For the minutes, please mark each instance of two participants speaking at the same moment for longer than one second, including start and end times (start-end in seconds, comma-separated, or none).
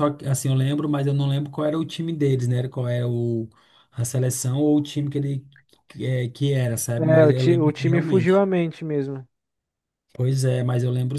7.0-8.4